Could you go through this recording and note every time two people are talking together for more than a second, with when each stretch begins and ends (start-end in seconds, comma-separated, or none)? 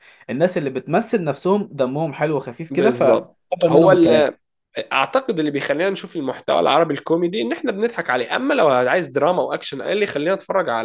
2.7-4.2